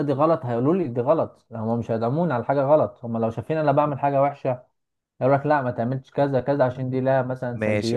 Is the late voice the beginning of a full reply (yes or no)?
yes